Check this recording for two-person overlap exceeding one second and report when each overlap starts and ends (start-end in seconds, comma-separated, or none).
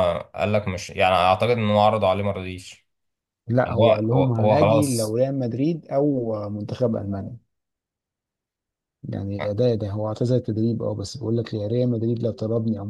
3.6-5.2